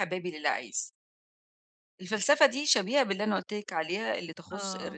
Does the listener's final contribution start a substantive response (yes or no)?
no